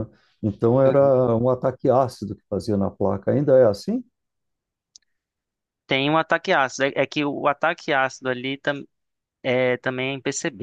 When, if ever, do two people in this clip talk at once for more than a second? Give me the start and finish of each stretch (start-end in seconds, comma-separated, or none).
none